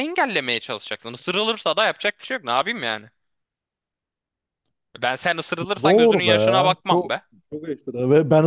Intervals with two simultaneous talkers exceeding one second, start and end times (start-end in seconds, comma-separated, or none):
5.8-7.2